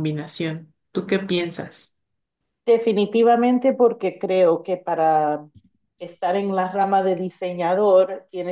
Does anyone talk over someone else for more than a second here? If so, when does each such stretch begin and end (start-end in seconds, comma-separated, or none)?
none